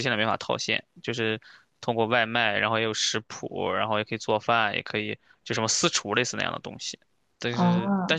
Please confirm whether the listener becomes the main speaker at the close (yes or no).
no